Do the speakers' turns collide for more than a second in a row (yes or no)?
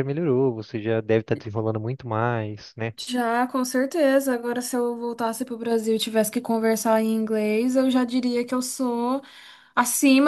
no